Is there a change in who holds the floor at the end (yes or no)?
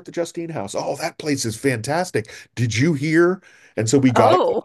no